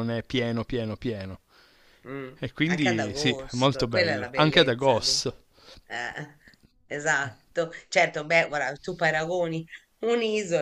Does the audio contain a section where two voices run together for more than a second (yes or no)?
yes